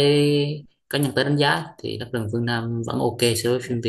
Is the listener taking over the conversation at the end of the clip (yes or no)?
yes